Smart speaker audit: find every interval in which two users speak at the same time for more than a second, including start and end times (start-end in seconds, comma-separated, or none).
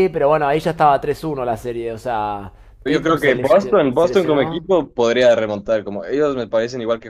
2.9-4.7